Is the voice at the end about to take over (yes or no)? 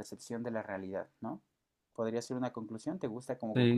yes